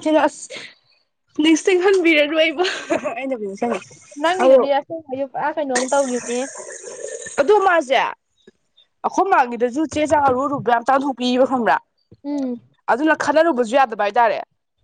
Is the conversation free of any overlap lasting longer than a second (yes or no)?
yes